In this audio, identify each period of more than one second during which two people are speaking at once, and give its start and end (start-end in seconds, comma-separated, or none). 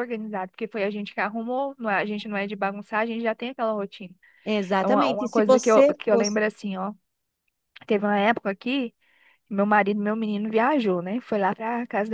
4.8-6.4